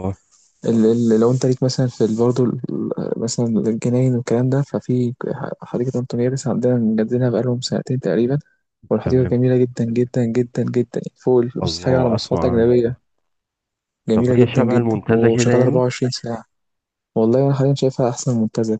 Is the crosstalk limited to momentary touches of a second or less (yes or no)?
no